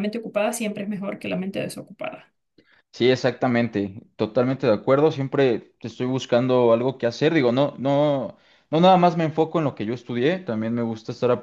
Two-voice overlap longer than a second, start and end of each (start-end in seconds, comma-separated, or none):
none